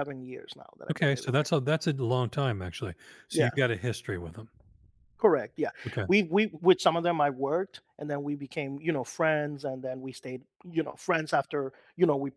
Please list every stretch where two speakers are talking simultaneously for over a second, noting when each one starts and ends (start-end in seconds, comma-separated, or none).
none